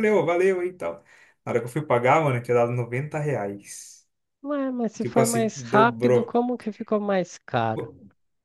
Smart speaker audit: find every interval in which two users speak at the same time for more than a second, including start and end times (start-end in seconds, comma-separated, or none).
5.0-6.4